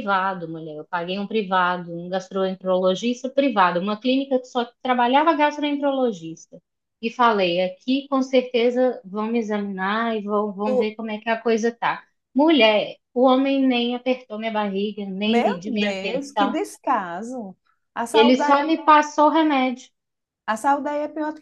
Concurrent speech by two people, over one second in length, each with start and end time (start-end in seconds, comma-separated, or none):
15.2-16.6